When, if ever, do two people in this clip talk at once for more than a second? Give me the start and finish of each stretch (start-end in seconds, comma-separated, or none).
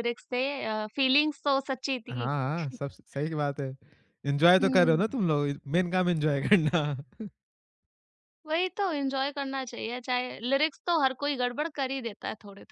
none